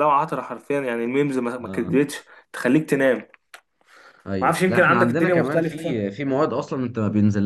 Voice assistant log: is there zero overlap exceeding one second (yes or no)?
no